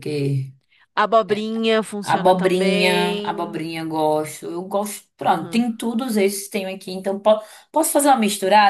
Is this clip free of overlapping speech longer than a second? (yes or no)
no